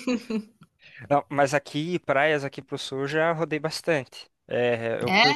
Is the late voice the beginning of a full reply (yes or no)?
no